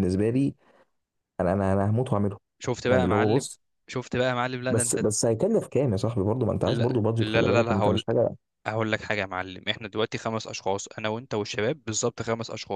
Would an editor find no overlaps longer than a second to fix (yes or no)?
no